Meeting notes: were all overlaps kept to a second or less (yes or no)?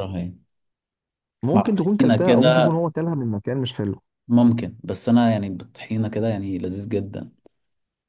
no